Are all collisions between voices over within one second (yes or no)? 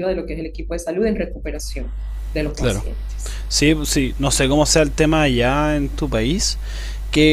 yes